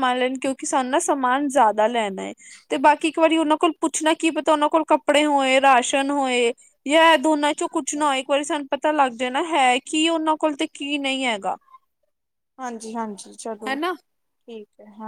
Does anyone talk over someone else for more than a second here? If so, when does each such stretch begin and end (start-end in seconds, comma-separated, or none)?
none